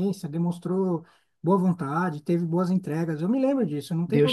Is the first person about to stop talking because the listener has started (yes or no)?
yes